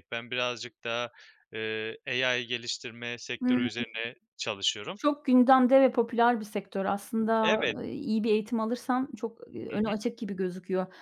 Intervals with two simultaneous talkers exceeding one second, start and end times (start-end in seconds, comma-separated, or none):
none